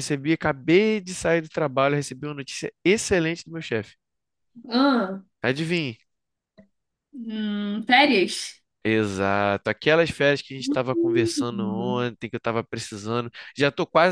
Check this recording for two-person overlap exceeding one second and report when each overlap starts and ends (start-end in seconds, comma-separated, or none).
10.7-11.9